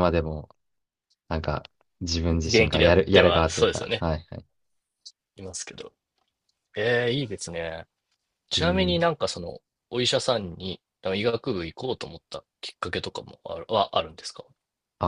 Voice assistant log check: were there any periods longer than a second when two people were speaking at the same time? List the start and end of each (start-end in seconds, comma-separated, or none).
2.5-4.0